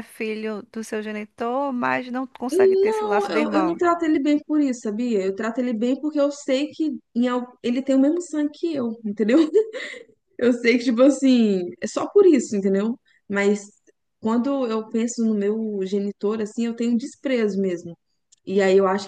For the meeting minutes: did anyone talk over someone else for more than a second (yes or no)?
yes